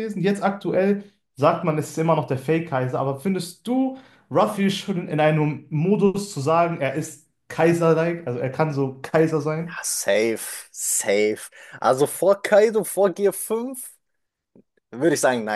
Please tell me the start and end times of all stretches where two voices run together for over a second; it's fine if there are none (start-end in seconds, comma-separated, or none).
none